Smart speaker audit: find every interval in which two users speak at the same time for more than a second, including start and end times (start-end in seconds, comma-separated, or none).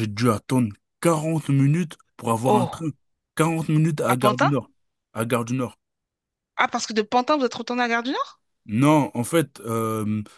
none